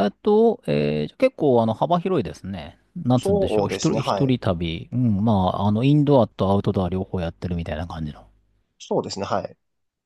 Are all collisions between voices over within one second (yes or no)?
no